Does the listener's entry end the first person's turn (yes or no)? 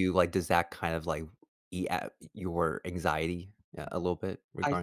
yes